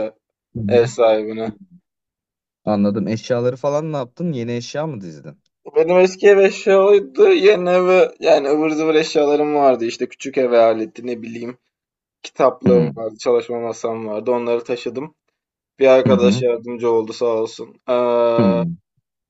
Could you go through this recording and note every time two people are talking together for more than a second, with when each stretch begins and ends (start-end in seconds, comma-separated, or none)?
none